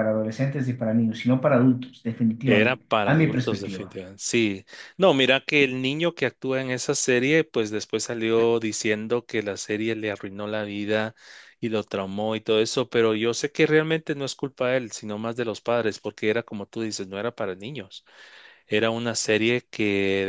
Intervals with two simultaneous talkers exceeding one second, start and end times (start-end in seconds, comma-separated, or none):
2.4-4.0